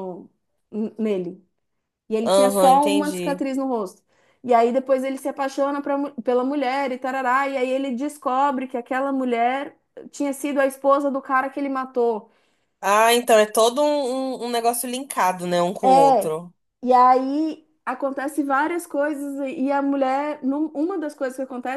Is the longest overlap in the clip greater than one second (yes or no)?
yes